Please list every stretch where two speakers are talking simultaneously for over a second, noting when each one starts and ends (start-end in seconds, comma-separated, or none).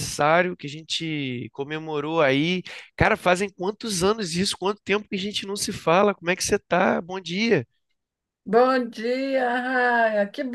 none